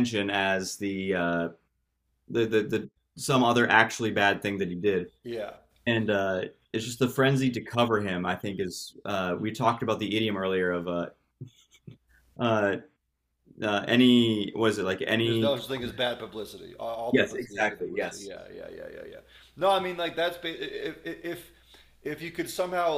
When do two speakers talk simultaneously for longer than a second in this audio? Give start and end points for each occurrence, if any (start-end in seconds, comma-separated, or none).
17.1-18.3